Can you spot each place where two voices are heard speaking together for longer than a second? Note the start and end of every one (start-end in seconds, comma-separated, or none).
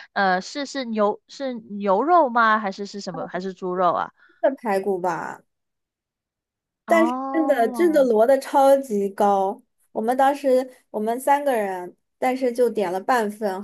6.9-8.1